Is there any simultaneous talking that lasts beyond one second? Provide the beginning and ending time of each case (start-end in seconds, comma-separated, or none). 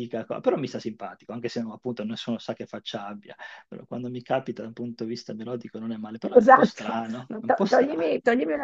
6.3-8.0